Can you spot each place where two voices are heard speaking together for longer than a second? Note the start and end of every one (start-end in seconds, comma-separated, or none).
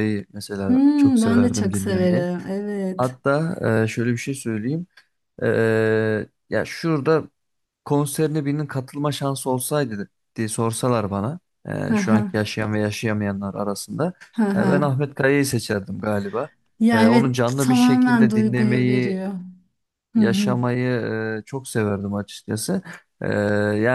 0.7-2.3, 16.9-19.2